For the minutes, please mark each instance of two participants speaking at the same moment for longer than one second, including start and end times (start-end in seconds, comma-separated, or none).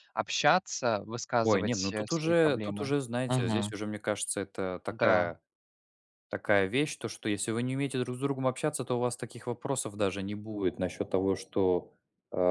1.4-3.7